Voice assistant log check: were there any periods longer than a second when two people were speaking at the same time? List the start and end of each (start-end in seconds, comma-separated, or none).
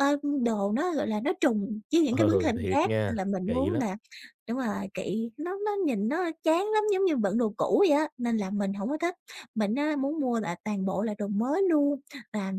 2.1-3.8